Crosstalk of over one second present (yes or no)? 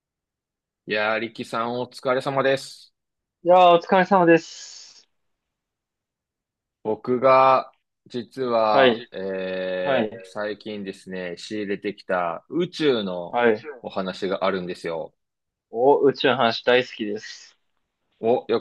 no